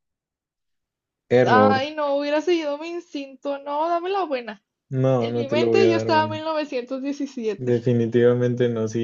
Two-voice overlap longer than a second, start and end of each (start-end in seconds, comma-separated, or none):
5.2-6.4